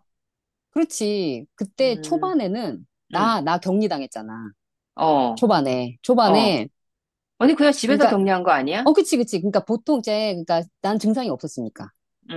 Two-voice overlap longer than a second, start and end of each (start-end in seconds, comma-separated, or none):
none